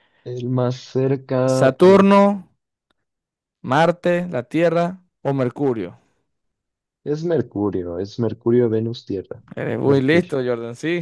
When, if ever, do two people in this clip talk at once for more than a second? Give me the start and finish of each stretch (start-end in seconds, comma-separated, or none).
none